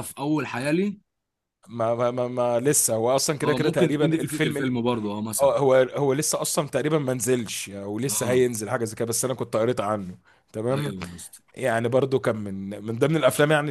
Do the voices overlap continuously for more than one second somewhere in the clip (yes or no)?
yes